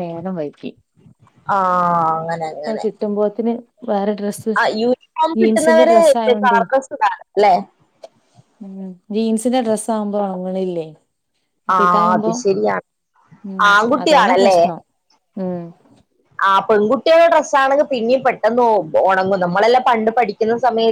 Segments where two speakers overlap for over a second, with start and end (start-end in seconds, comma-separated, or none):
none